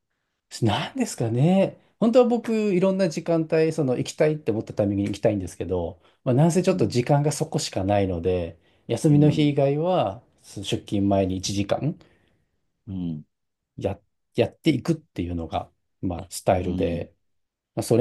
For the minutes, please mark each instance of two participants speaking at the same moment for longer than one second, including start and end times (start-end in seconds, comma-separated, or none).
none